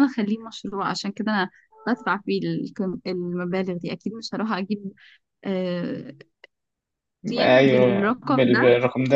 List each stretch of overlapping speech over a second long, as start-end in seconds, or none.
7.4-8.6